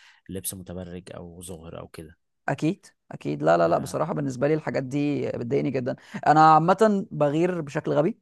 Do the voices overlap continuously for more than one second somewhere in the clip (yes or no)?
no